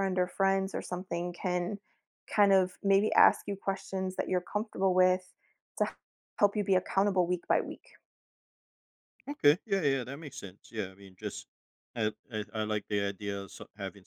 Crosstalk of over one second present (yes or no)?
no